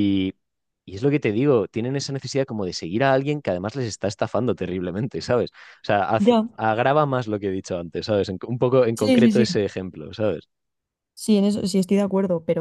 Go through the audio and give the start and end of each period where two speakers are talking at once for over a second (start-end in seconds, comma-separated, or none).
none